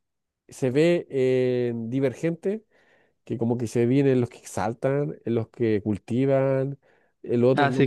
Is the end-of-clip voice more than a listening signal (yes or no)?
yes